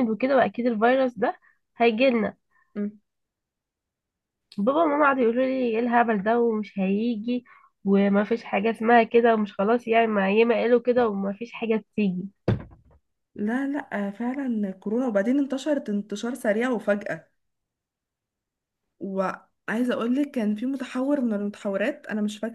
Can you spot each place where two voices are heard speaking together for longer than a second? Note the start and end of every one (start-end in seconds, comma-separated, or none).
none